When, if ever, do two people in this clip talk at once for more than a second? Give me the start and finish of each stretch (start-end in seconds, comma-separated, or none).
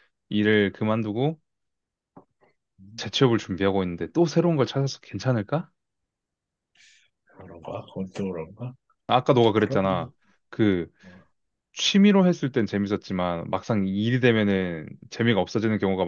none